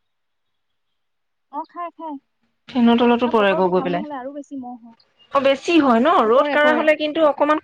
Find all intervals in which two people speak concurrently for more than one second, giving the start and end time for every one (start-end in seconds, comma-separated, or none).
3.2-5.0